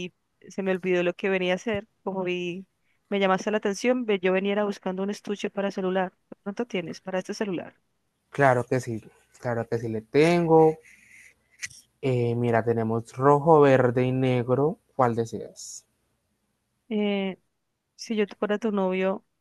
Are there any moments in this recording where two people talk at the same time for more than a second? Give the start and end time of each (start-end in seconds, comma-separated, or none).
none